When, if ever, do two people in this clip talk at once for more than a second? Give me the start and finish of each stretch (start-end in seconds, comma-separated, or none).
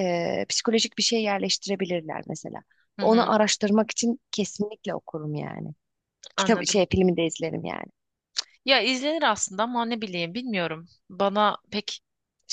none